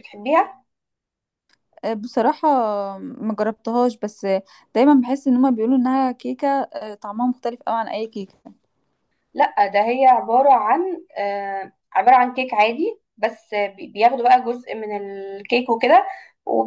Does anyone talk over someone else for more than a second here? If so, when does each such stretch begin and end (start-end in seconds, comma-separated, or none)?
none